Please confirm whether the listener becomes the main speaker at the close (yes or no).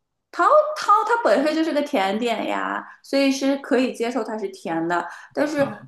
no